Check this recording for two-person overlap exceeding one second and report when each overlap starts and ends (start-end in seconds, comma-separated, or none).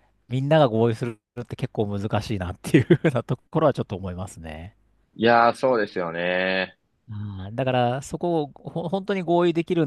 none